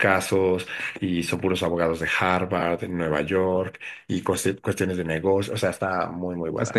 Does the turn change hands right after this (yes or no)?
yes